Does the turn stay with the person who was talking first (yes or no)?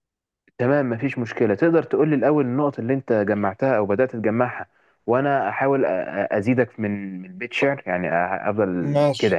no